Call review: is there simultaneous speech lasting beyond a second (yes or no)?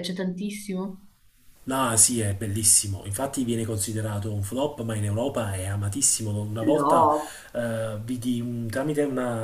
no